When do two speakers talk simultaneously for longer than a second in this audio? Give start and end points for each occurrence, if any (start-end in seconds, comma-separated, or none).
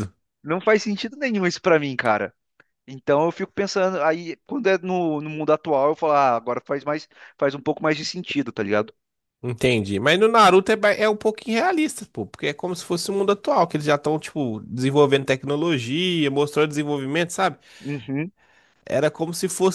none